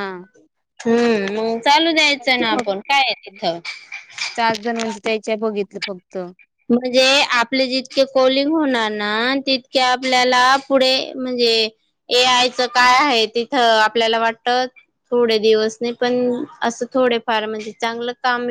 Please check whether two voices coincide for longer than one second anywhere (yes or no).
no